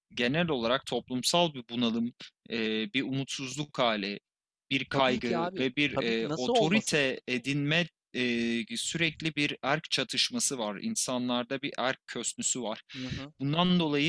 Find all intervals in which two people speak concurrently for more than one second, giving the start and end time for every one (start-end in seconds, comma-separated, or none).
4.9-7.0